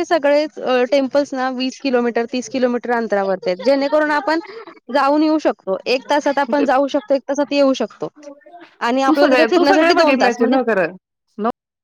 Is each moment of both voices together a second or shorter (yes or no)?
no